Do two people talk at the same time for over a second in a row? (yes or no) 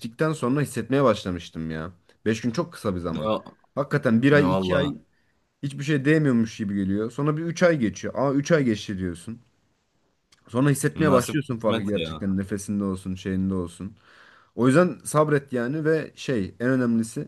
yes